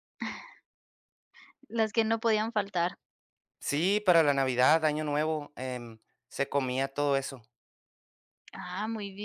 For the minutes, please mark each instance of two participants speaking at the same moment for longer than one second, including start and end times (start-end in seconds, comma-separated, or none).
none